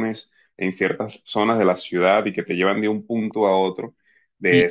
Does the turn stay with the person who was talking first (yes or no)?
no